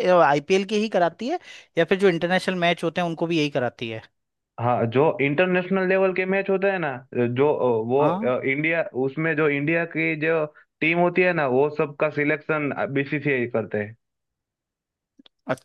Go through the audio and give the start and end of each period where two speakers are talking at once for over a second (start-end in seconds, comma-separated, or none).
none